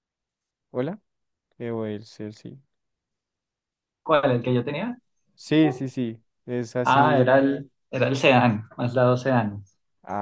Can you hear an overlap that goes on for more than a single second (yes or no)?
no